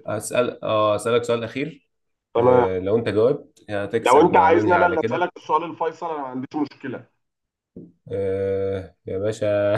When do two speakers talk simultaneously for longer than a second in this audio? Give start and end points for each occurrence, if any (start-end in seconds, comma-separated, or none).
4.0-5.3